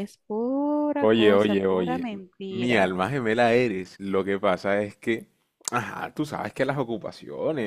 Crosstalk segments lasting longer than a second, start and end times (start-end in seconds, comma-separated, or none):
1.0-2.9